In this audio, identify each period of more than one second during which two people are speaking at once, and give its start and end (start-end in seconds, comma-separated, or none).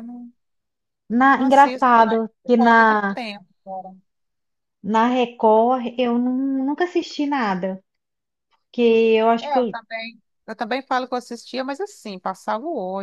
1.3-3.2